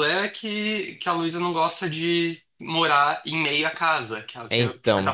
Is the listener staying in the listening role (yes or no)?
yes